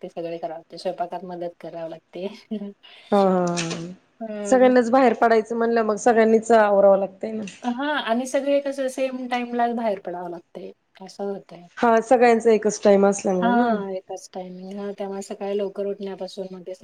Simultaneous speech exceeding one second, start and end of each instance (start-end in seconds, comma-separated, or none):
none